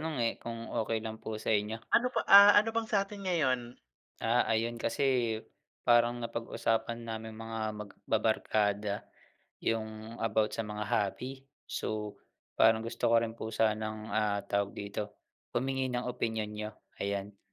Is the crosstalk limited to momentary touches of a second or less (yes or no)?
yes